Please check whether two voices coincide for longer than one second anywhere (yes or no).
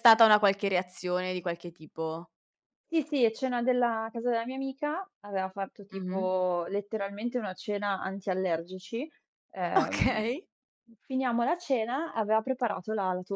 no